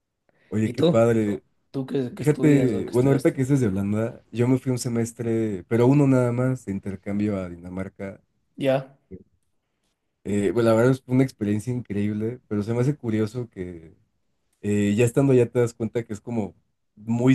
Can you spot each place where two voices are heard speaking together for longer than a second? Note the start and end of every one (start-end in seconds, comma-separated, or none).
2.2-3.5